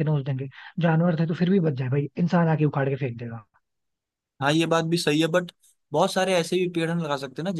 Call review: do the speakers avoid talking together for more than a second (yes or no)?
yes